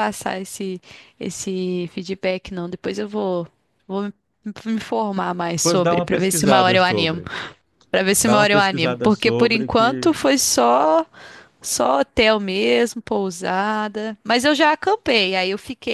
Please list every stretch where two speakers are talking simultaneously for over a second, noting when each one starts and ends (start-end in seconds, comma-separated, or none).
5.6-7.2, 8.2-10.1